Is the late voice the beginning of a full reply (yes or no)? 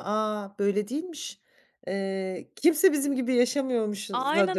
yes